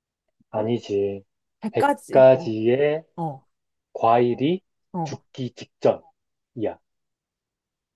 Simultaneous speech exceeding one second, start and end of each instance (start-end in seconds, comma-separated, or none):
1.7-3.0